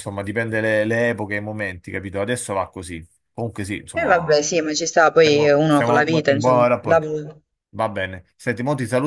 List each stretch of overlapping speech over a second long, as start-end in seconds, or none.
5.2-7.1